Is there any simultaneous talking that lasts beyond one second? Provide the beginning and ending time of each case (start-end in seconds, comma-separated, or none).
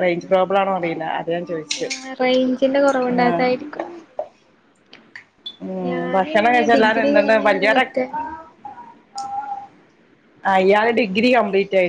5.9-7.7